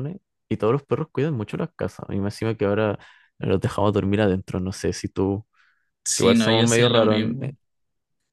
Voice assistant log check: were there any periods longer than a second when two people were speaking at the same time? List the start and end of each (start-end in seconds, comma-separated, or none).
6.1-7.5